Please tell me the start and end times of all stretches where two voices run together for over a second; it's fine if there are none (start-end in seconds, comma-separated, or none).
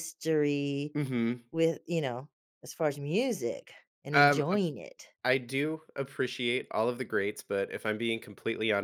none